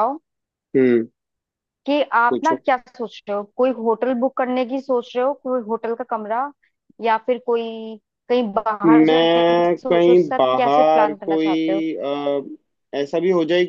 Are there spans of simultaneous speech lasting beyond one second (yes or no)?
yes